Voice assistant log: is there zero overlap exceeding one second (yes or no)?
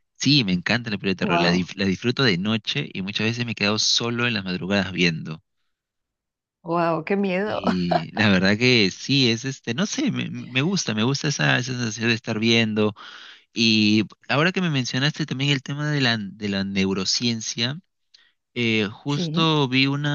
yes